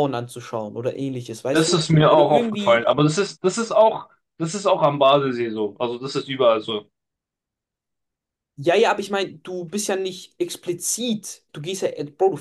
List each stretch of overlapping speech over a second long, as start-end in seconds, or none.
1.5-2.9